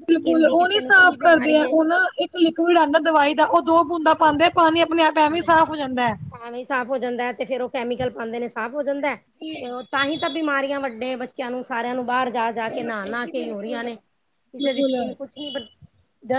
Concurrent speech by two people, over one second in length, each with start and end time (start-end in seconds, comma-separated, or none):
none